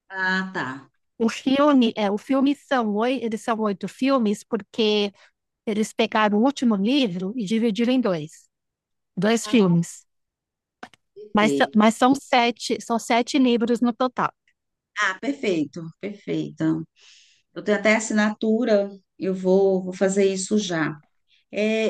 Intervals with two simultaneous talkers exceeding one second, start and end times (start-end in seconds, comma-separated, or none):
none